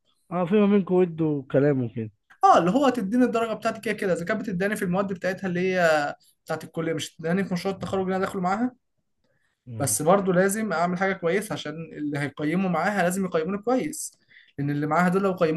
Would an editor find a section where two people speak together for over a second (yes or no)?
no